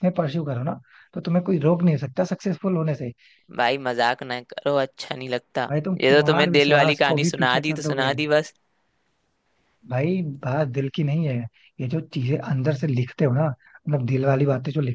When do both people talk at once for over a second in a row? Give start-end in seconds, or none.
5.7-8.1